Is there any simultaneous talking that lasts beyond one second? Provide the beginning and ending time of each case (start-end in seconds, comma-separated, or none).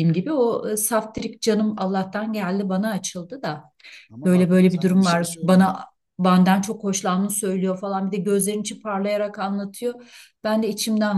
4.2-5.8